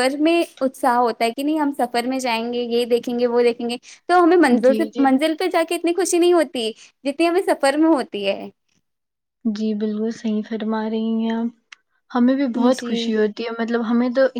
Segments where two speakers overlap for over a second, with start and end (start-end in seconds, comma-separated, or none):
none